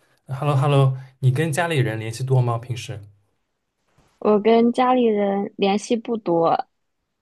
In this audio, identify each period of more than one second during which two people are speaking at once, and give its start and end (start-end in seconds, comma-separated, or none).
none